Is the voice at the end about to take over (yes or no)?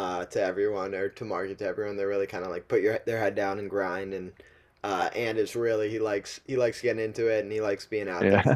no